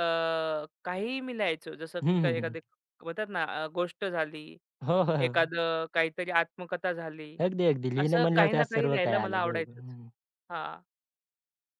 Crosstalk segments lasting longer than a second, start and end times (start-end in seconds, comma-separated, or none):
8.0-9.9